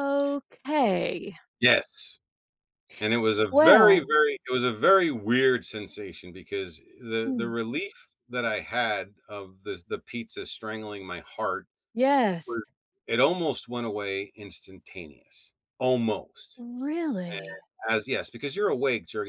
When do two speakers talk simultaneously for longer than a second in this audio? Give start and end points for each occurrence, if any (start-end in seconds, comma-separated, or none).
none